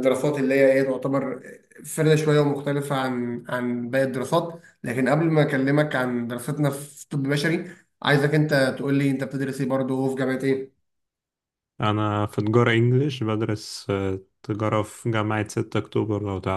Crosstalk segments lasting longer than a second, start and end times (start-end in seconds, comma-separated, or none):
none